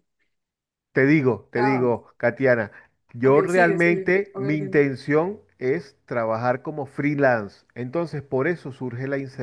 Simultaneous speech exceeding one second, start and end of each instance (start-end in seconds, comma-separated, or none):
3.2-4.8